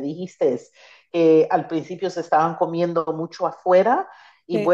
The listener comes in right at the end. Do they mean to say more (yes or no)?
no